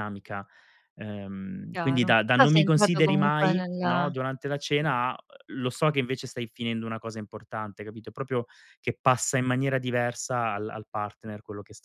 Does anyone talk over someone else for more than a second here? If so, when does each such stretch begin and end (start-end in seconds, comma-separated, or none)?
1.7-3.8